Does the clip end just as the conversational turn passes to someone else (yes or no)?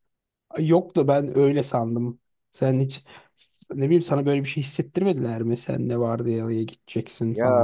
yes